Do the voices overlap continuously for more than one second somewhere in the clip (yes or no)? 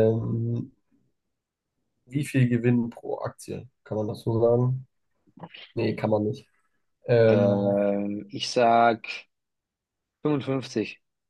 no